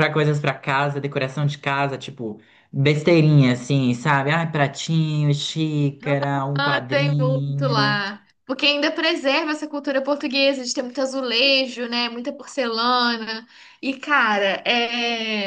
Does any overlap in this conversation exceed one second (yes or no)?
yes